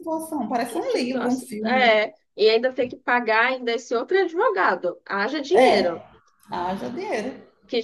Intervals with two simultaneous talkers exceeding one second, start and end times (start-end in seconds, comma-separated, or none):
0.7-2.0